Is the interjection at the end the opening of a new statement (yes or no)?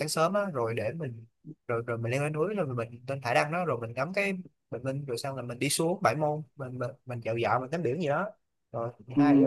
yes